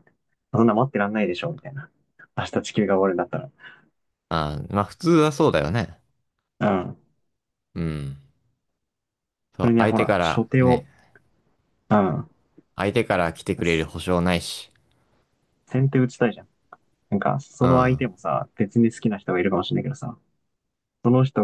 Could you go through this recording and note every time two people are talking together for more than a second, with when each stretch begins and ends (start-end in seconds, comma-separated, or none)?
9.6-10.9